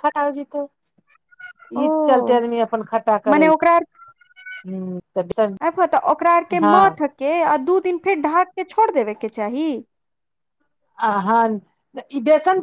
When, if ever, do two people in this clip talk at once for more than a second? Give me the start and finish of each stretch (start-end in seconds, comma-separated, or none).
none